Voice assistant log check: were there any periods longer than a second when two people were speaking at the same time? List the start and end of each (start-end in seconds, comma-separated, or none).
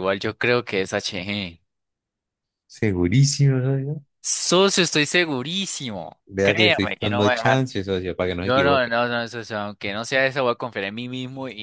6.3-7.6